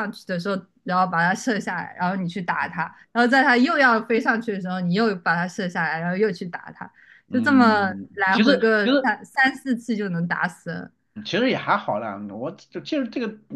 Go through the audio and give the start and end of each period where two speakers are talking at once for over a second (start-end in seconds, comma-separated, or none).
7.3-9.2